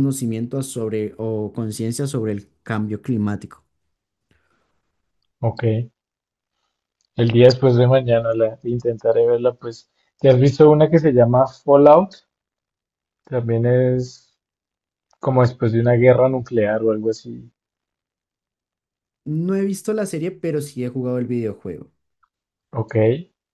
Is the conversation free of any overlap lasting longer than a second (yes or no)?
yes